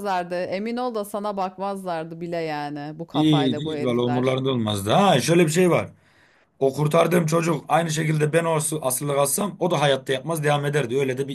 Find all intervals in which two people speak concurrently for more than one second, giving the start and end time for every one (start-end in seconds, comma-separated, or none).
3.1-4.4